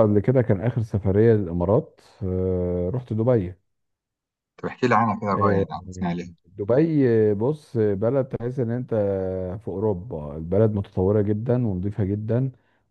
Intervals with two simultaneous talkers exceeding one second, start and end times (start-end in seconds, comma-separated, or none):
none